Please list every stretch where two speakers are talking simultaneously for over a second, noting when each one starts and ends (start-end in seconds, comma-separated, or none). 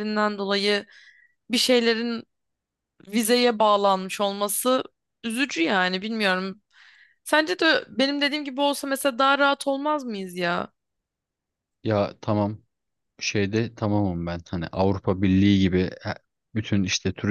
none